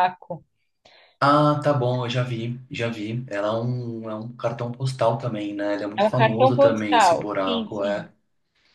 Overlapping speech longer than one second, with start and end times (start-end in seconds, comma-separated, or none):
6.0-8.1